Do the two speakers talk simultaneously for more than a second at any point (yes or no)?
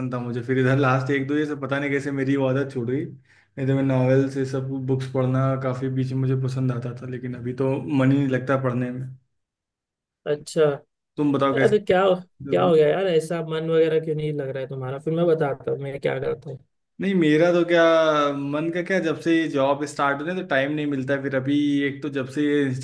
no